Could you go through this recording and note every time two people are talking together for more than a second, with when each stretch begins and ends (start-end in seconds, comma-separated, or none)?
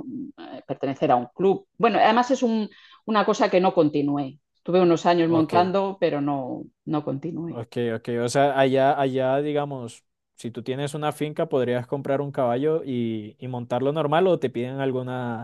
none